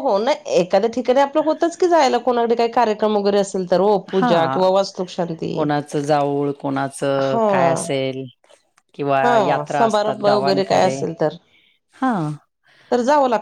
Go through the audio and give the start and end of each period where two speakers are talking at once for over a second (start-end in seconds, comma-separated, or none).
9.2-10.9